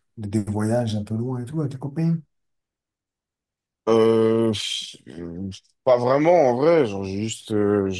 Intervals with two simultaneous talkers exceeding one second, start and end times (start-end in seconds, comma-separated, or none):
none